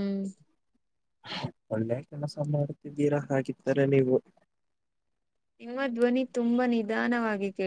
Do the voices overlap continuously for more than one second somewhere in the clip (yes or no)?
no